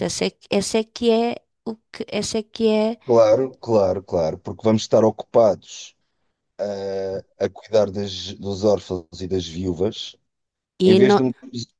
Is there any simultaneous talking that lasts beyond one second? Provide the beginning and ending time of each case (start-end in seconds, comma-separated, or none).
none